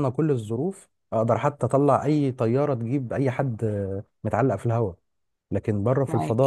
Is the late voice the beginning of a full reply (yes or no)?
no